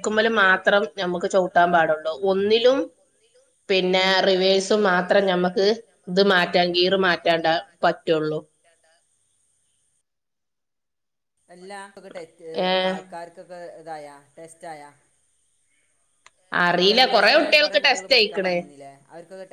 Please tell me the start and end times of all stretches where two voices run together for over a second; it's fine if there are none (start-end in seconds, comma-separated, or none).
16.7-18.6